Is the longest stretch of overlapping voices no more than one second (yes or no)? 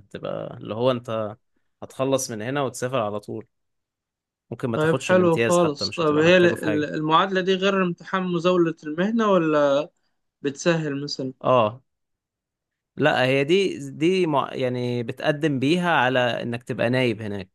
no